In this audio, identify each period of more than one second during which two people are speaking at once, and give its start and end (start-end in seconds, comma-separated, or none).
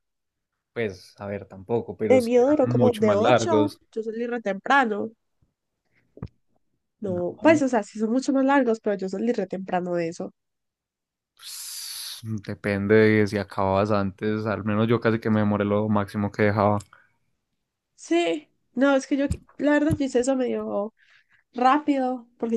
2.1-3.8